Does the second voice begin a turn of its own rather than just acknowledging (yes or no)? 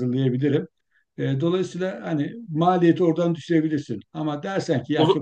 no